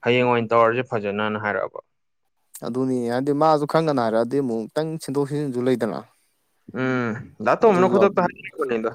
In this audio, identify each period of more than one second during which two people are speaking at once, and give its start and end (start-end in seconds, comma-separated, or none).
none